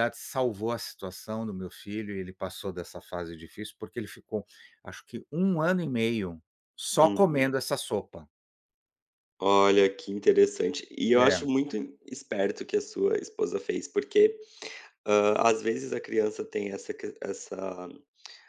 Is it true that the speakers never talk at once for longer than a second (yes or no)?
yes